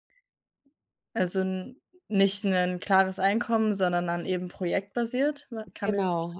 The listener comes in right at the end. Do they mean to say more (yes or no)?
yes